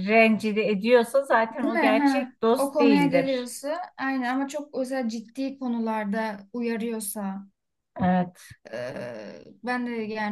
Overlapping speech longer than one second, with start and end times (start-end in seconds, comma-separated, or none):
1.6-3.5